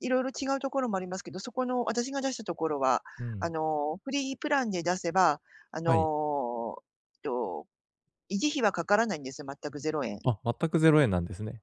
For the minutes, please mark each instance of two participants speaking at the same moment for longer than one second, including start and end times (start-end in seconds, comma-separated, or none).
none